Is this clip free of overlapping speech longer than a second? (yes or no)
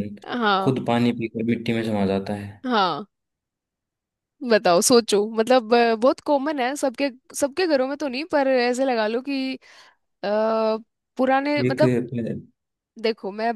yes